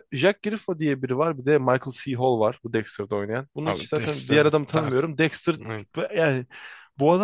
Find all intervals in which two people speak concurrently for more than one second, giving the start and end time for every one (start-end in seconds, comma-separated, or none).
3.6-5.0